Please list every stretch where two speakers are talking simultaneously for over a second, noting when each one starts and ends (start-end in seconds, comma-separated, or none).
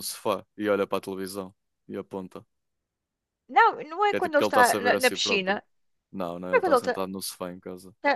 4.1-5.6